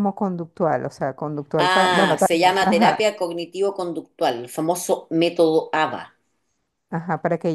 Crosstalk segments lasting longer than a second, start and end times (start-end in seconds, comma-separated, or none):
1.6-2.9